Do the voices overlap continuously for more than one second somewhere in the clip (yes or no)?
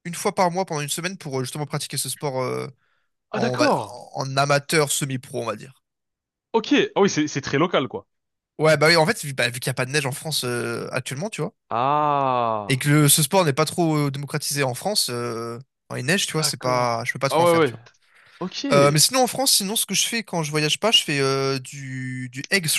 yes